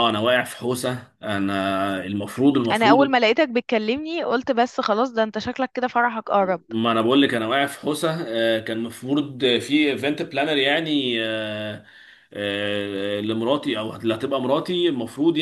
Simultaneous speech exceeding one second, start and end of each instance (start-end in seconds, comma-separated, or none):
none